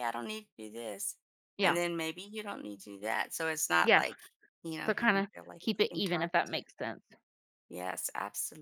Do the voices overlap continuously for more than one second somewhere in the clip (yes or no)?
yes